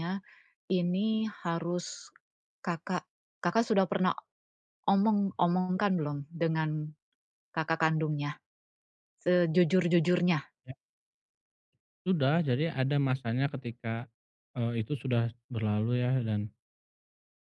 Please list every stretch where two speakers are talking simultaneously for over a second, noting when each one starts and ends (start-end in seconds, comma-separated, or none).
none